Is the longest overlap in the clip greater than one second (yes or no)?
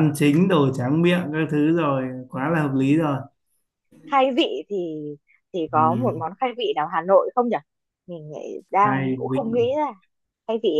no